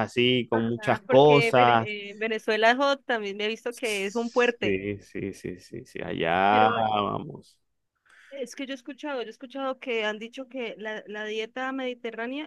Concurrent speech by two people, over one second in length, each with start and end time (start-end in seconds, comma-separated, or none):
0.5-1.9